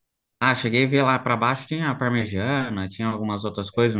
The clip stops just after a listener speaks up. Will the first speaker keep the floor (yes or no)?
no